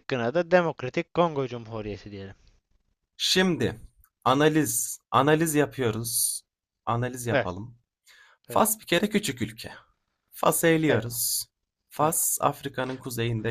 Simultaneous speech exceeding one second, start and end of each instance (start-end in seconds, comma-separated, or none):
none